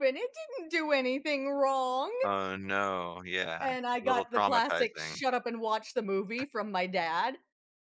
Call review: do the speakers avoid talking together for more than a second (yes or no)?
no